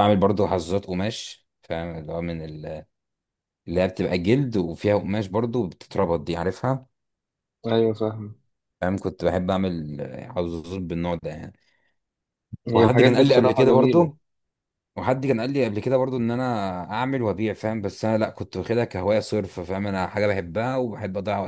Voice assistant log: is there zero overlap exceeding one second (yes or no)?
no